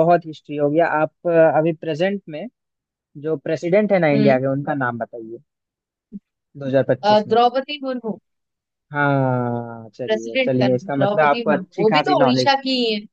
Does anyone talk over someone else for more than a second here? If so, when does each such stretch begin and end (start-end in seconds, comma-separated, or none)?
10.1-12.5